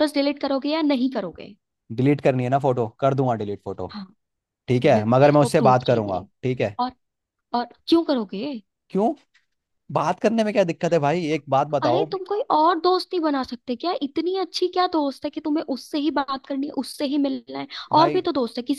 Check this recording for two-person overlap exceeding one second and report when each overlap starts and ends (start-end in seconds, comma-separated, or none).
4.8-6.3